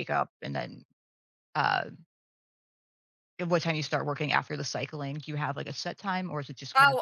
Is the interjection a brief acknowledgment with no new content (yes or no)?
no